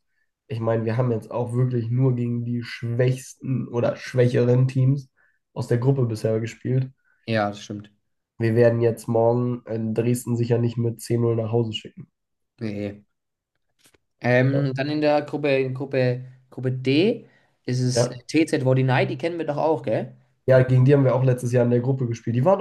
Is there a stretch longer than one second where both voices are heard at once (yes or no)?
no